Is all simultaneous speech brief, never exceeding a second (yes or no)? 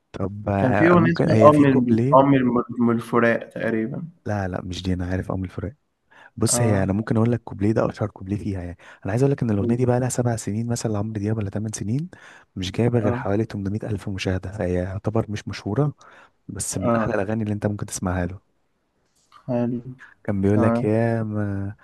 no